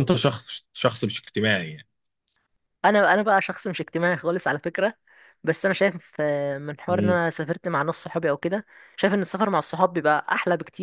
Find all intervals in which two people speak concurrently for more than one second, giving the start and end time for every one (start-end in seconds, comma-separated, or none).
none